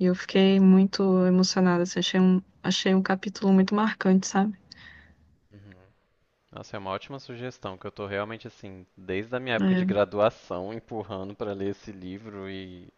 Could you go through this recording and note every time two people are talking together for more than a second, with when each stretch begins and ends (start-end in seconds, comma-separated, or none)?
none